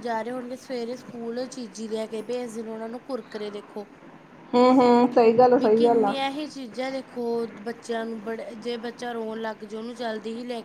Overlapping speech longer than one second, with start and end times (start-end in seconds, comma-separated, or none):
none